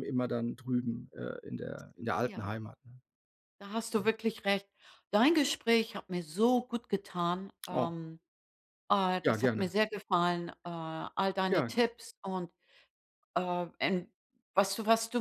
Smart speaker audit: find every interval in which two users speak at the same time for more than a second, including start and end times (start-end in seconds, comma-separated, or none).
none